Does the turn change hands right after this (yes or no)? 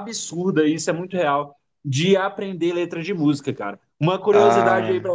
no